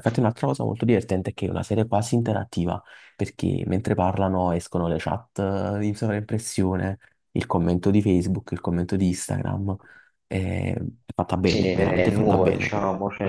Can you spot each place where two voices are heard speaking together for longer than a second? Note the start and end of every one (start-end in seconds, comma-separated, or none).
11.4-12.8